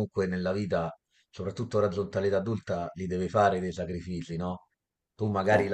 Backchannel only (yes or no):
yes